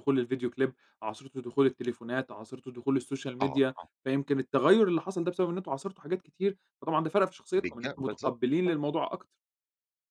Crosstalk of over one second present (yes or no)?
yes